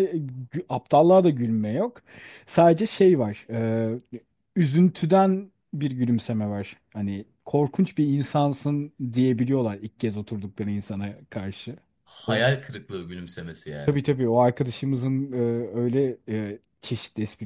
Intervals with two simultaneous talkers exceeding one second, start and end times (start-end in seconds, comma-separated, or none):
none